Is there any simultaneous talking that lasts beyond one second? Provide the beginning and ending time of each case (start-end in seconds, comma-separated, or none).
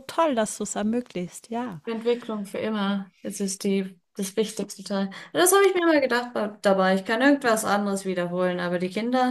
none